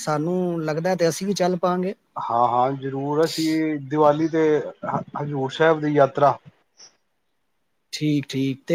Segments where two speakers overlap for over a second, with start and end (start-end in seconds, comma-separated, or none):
none